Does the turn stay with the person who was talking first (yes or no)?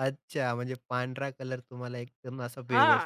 no